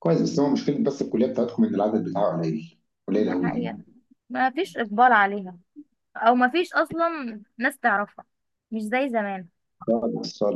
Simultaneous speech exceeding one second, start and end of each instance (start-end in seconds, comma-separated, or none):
none